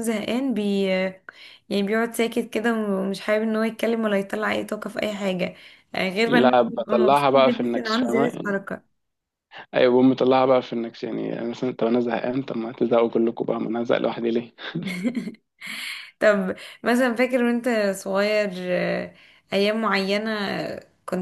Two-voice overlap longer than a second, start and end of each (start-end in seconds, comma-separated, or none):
6.2-8.6